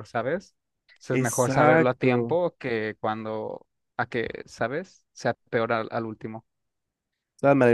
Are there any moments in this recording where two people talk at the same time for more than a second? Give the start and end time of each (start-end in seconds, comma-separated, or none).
1.1-2.4